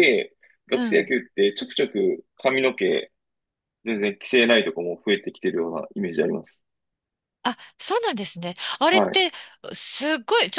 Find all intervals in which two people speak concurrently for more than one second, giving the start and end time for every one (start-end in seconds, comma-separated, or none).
none